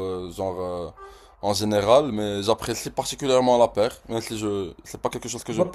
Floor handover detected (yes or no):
yes